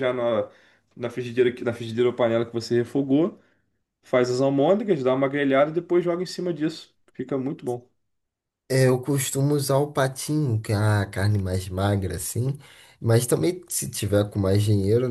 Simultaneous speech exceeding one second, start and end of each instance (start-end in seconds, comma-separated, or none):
none